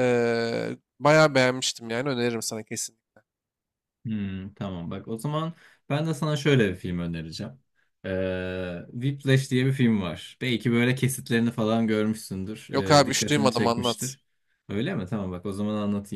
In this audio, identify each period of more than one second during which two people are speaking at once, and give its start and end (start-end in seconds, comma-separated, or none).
12.7-14.2